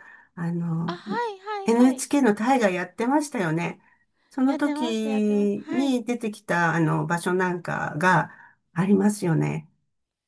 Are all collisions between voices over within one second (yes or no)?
no